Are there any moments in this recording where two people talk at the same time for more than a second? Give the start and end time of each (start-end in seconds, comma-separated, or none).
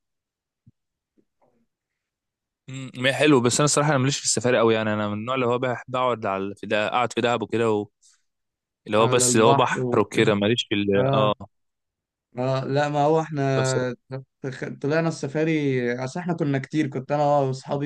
9.0-10.3